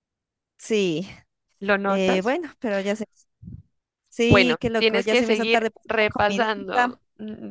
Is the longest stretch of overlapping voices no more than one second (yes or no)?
no